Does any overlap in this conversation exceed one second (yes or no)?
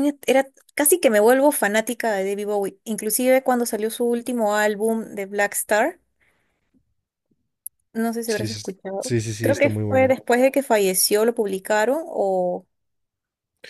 yes